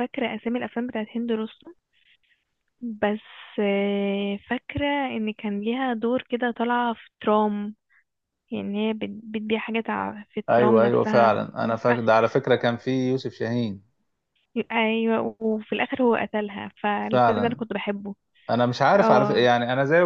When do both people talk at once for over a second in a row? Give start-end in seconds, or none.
10.5-12.1